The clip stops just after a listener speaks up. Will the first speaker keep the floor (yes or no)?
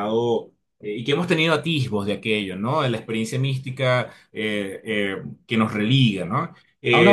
no